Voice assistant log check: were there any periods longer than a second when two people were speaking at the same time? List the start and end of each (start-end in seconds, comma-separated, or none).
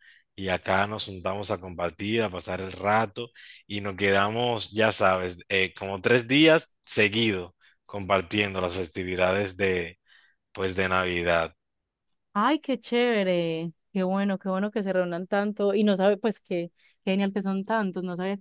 none